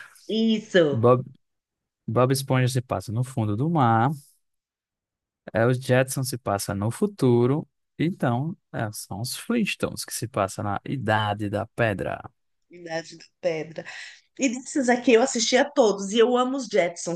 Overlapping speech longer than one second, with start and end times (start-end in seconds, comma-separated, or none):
none